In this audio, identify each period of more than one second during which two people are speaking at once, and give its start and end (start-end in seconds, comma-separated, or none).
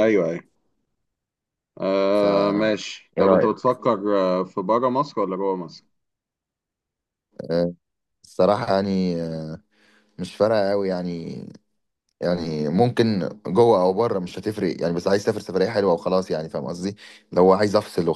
none